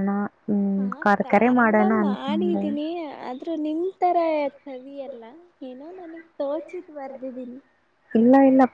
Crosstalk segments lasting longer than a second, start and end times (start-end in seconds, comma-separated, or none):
0.8-2.6